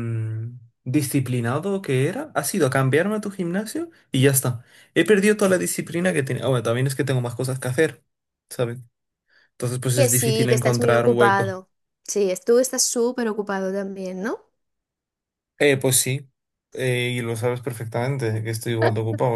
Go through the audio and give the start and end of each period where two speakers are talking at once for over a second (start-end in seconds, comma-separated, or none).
9.9-11.6